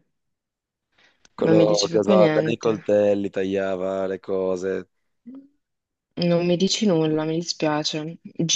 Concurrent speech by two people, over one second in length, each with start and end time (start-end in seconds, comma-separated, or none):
1.4-3.0